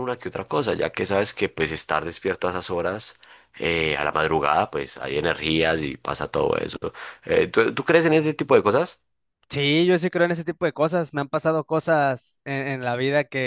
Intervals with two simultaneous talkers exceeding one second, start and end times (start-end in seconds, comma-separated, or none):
none